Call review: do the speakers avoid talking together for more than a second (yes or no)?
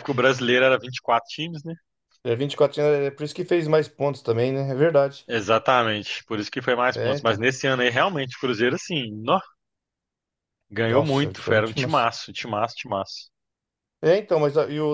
no